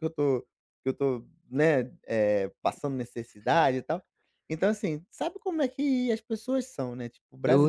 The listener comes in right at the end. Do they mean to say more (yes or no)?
yes